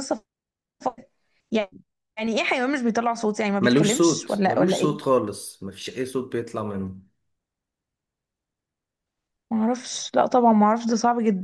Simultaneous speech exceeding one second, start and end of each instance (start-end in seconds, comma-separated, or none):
3.6-5.0